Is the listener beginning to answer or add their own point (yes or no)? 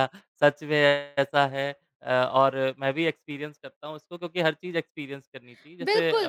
yes